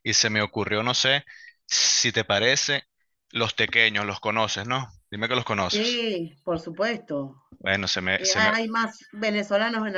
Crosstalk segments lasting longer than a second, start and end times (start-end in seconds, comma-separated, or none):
none